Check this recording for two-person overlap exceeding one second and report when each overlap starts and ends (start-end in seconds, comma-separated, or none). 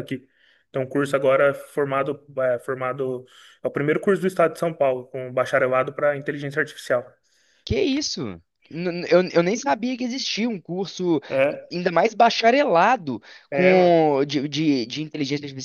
none